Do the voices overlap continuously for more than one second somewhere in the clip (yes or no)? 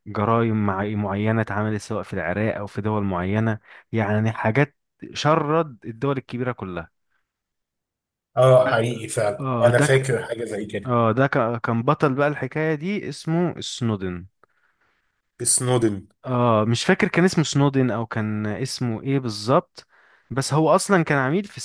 no